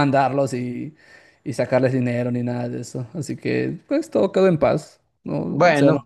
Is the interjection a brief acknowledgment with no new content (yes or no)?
no